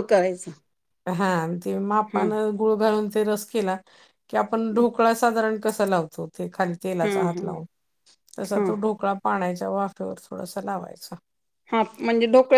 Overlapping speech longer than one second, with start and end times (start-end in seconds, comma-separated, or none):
none